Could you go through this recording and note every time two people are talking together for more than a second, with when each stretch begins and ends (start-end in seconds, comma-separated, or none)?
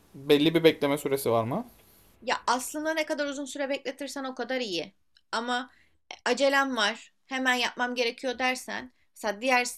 none